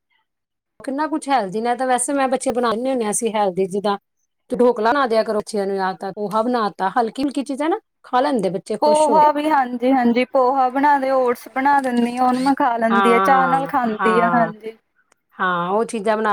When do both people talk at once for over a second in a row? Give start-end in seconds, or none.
12.9-14.5